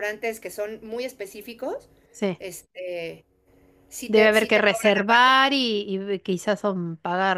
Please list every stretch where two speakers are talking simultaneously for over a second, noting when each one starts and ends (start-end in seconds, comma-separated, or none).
4.1-5.3